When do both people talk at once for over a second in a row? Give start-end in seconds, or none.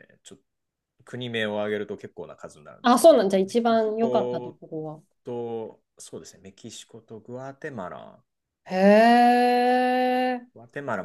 2.8-4.6